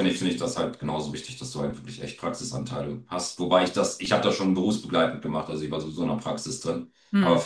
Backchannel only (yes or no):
yes